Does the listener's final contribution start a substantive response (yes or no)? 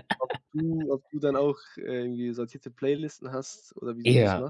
yes